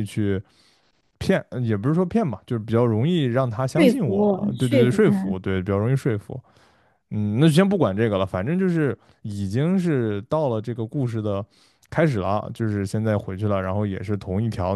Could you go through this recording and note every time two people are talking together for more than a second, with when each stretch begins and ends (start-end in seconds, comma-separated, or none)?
3.7-5.4